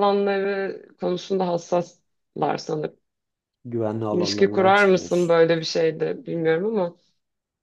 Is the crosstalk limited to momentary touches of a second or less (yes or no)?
no